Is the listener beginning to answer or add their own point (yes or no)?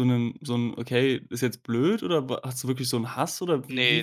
yes